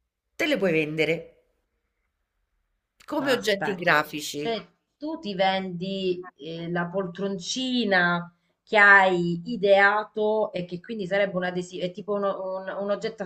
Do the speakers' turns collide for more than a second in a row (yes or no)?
yes